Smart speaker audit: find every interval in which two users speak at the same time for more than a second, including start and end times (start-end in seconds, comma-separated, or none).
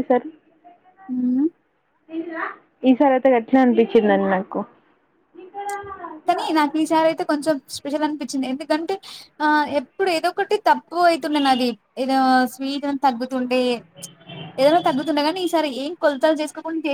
none